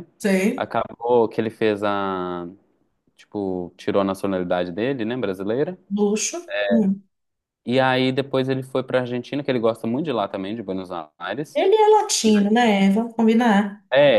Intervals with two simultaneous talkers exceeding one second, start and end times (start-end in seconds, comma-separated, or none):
none